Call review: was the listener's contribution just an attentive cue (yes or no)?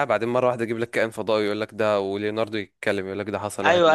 no